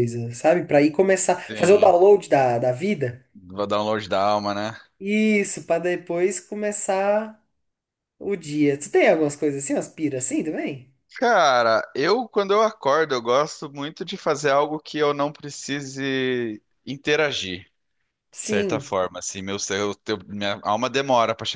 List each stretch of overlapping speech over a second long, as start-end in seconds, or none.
none